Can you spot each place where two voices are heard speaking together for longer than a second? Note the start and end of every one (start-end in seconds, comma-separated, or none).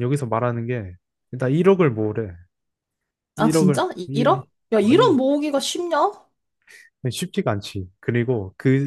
3.4-5.2